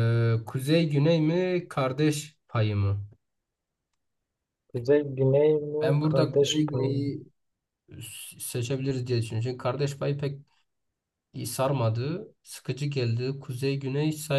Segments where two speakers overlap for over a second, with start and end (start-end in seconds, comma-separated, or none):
5.8-7.0